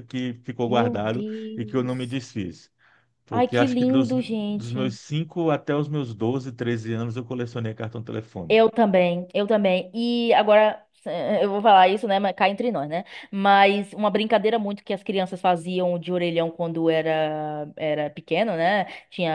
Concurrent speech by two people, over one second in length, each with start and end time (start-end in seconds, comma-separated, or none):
0.7-2.2, 3.3-5.0